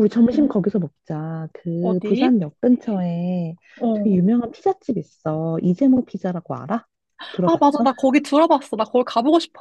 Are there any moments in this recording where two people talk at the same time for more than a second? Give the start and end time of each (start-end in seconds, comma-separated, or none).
none